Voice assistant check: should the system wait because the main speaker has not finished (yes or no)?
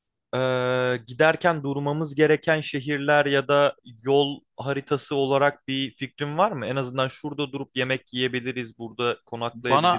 no